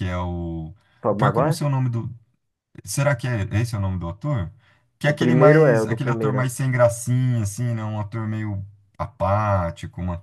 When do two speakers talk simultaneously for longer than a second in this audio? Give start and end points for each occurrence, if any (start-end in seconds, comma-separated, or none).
5.0-6.5